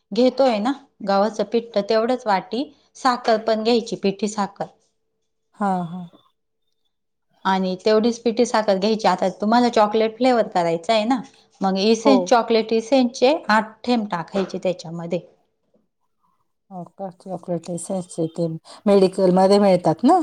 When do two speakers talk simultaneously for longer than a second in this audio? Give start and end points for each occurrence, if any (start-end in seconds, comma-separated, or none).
none